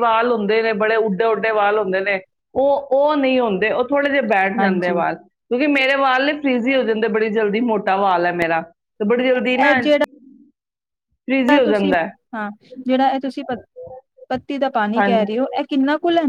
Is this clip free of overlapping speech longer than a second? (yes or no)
yes